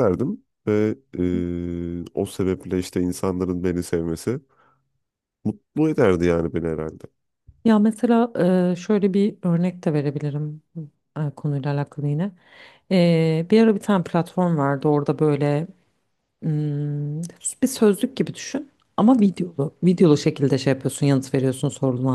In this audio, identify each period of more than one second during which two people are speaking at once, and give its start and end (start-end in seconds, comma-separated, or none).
none